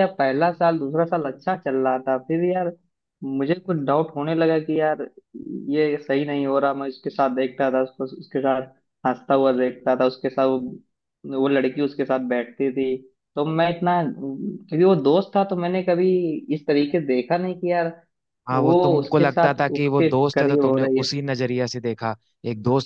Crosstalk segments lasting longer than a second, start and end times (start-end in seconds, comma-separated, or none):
18.5-21.1